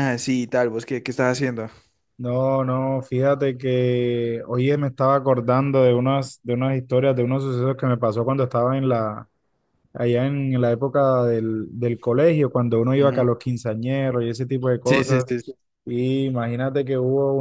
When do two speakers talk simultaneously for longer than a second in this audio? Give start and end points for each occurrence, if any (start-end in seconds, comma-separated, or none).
none